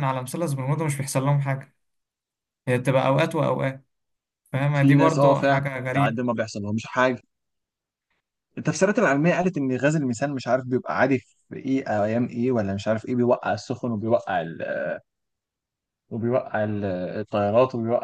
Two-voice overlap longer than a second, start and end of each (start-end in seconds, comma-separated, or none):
4.8-6.2